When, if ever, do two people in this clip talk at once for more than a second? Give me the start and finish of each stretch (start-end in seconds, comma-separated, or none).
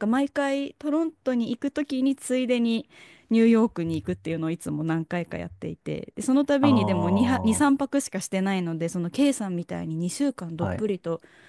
6.6-7.8